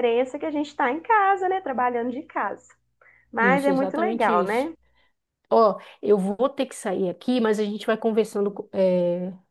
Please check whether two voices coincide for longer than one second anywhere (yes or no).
yes